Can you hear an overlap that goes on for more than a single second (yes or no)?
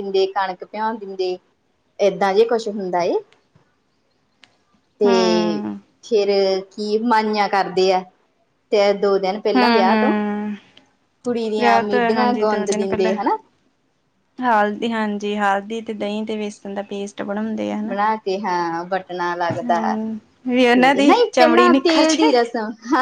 yes